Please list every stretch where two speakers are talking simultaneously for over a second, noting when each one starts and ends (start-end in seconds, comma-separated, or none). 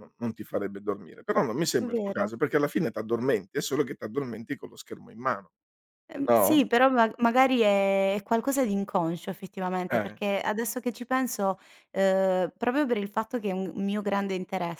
none